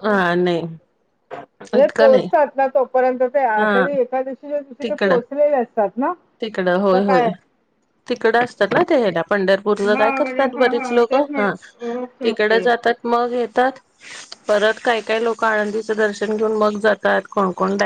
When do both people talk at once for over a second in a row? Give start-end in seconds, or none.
9.8-11.5